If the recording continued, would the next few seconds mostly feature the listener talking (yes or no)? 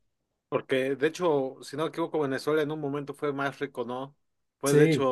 no